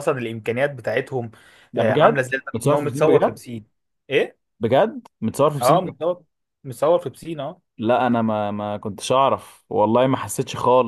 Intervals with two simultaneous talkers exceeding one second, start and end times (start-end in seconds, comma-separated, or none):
1.8-3.4